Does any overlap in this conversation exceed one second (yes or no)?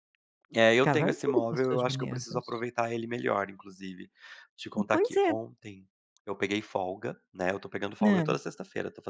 yes